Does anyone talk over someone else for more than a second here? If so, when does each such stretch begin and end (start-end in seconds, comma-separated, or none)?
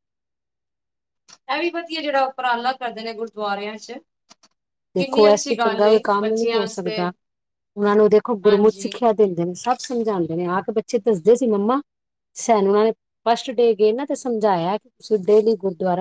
5.0-7.0